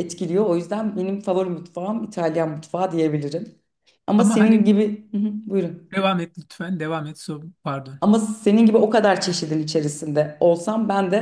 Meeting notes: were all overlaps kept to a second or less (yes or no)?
yes